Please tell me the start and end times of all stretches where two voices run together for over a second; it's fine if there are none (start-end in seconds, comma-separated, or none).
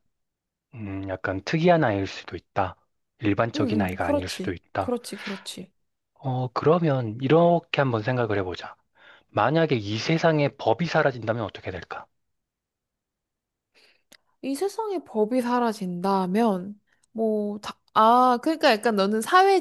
3.5-4.9